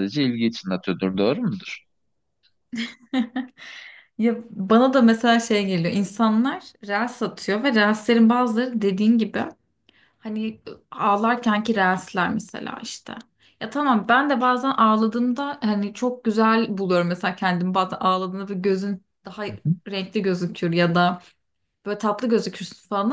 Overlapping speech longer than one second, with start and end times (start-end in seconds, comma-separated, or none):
none